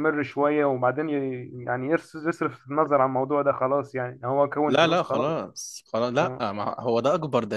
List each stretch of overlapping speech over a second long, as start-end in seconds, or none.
none